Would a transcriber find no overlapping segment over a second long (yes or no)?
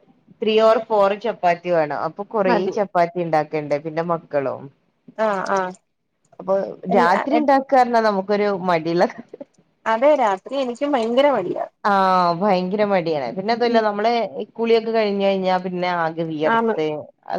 yes